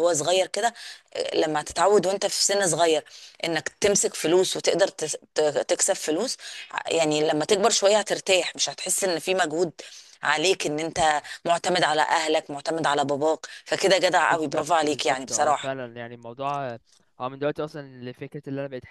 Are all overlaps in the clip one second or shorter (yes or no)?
no